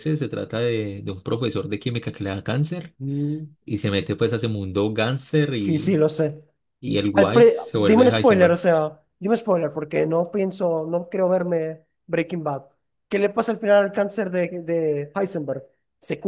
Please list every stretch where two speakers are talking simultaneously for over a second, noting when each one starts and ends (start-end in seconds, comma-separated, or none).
7.1-8.6